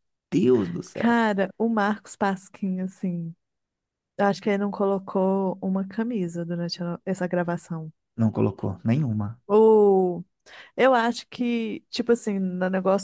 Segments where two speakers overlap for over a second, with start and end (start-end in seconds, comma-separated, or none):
none